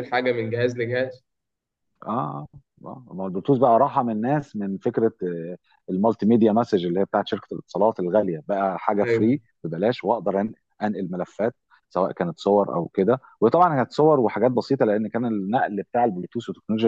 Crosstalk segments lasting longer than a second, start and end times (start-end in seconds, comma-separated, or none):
none